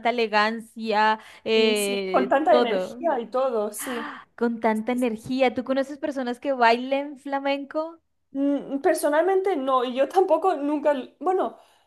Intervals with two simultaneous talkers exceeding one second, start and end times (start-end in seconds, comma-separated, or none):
1.5-3.0